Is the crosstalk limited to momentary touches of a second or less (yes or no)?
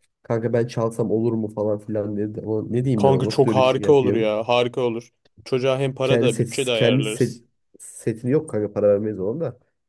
no